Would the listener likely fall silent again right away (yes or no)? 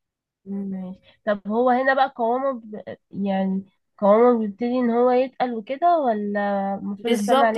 no